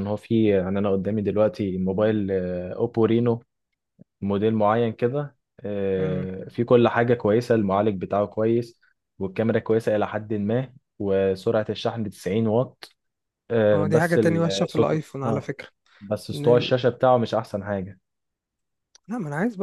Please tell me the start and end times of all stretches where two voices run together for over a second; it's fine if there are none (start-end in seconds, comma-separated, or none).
13.7-15.5